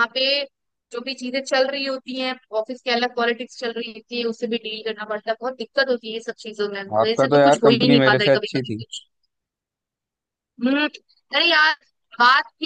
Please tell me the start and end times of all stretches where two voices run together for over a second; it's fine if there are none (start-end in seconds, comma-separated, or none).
7.0-8.8